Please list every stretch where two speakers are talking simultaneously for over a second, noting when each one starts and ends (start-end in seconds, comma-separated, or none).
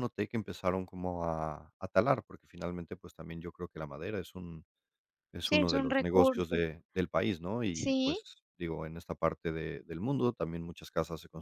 5.4-6.6